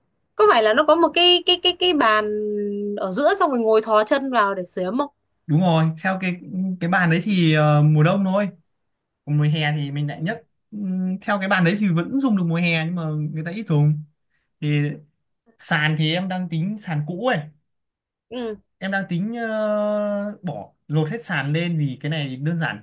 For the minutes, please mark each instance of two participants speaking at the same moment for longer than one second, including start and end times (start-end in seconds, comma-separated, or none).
none